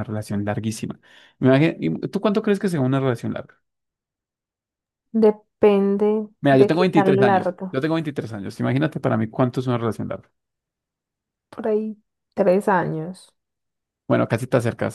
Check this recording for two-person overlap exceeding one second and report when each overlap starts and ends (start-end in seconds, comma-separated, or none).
6.4-7.8